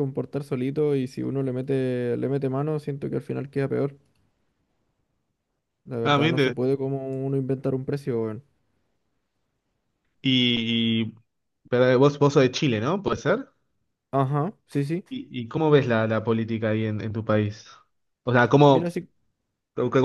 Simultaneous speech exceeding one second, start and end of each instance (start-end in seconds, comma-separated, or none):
none